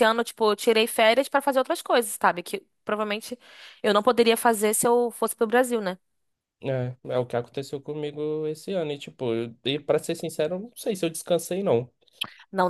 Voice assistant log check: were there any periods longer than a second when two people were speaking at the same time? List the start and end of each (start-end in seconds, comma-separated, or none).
none